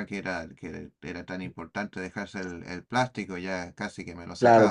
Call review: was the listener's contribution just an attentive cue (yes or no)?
no